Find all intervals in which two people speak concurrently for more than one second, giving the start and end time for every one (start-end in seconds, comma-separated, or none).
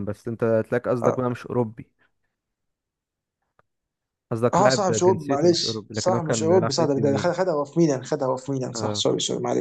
4.5-7.3